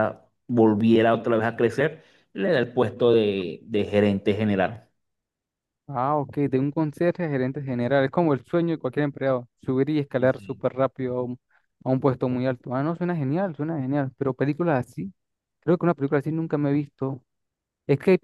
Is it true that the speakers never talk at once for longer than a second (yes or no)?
yes